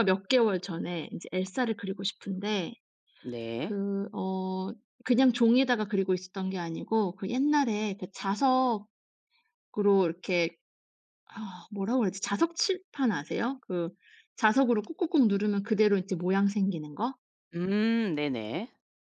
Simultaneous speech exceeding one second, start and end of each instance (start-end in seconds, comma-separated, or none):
none